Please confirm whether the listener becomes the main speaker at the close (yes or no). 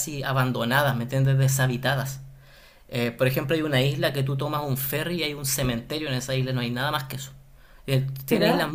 no